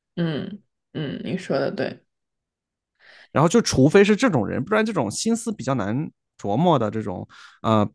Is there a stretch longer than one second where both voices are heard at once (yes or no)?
no